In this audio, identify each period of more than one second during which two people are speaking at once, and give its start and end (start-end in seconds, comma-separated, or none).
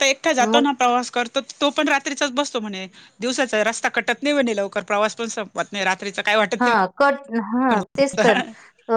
none